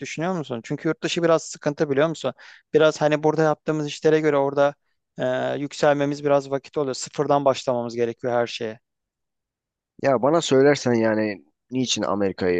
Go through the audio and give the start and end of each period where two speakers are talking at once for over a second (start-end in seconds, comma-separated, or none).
none